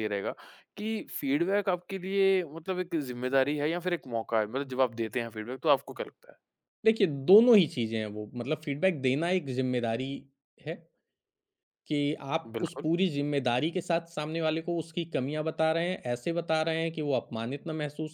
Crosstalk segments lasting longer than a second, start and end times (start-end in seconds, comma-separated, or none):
none